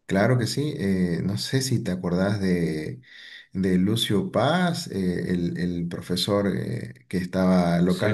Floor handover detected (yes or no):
no